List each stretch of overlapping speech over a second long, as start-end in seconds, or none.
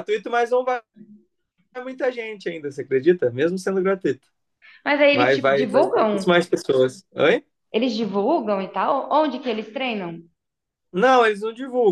5.1-6.4